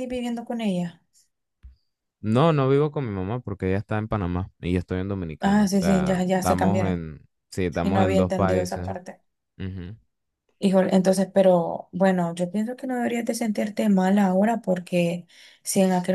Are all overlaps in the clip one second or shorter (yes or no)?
no